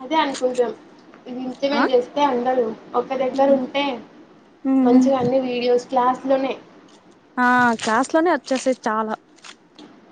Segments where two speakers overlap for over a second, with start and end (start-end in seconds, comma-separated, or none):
none